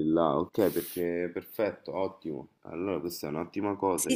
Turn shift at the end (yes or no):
yes